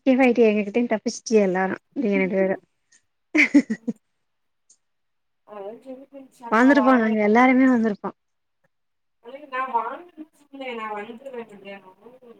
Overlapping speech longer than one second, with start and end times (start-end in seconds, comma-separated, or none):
none